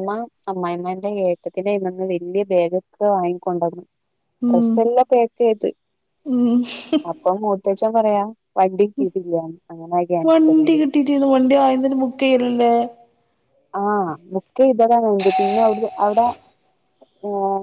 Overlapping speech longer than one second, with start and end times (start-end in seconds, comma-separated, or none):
none